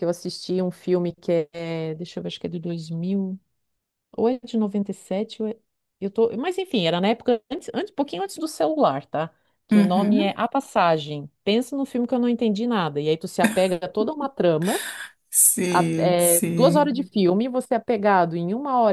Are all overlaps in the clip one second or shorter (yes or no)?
no